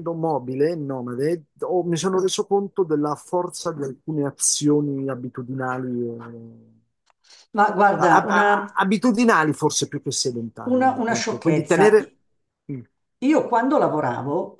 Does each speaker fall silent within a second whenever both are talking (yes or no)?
no